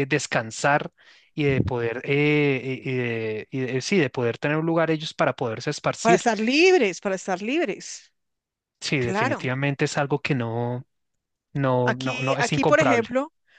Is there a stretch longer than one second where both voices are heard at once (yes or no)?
yes